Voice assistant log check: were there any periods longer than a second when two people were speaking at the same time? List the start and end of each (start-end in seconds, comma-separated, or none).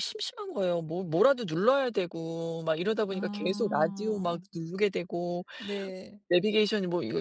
3.1-4.4